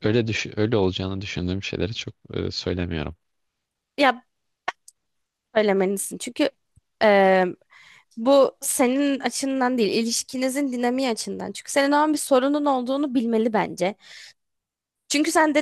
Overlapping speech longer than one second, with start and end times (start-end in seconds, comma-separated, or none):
none